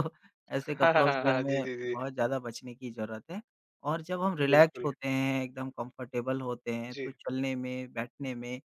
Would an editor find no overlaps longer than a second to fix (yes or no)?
no